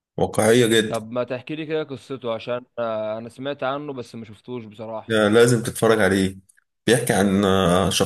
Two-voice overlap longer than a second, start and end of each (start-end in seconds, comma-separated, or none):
none